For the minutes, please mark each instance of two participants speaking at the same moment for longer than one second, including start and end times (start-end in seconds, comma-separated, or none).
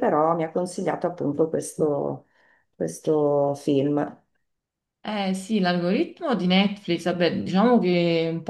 none